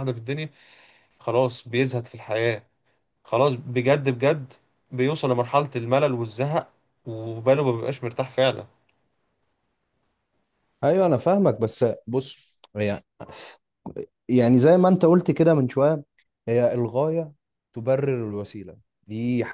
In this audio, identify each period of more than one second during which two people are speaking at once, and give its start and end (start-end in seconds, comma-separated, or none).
none